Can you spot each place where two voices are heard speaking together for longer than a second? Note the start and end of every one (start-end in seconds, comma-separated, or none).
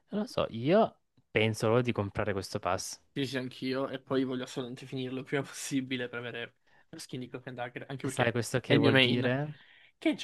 8.0-9.4